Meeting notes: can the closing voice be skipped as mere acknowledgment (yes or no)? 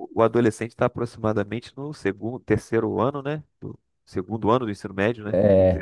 no